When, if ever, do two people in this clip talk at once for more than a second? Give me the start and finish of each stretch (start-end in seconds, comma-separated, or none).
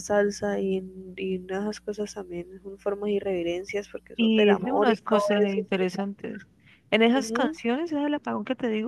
4.2-6.1